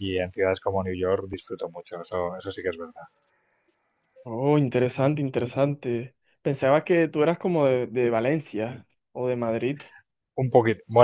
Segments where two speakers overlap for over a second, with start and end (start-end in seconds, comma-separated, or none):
none